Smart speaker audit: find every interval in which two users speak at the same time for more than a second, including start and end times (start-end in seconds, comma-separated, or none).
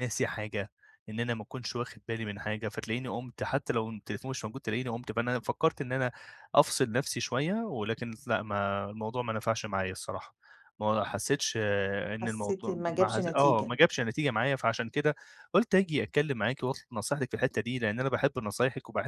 12.2-13.8